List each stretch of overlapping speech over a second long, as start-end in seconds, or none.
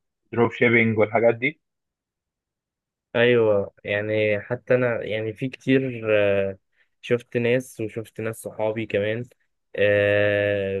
none